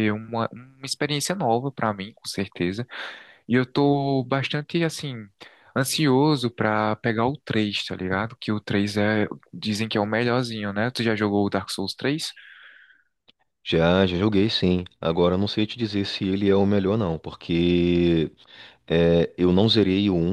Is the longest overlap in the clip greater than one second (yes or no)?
no